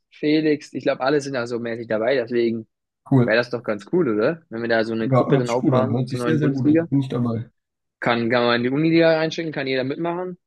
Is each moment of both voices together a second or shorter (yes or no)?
no